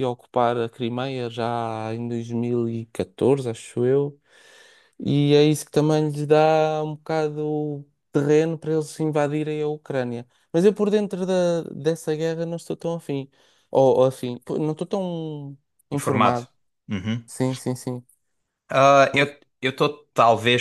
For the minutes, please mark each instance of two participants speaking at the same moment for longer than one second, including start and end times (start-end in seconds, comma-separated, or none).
none